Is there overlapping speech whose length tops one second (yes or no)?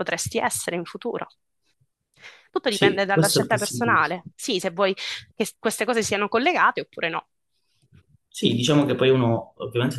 yes